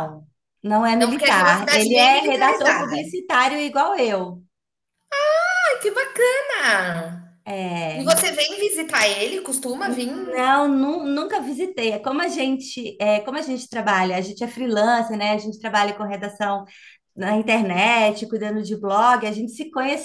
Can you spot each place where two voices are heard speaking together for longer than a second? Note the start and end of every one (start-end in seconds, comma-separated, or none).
1.0-3.1